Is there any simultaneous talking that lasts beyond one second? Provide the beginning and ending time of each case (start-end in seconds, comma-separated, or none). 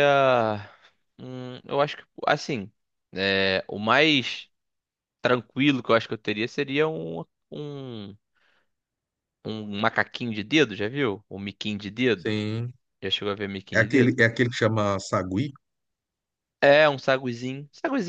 none